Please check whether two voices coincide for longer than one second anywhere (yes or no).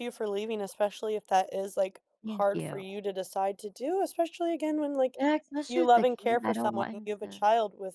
yes